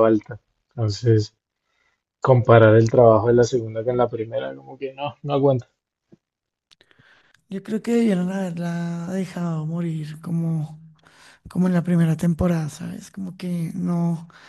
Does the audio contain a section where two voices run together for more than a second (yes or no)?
no